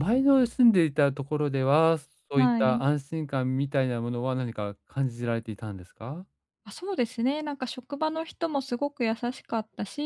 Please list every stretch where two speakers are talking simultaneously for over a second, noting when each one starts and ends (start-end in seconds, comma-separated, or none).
none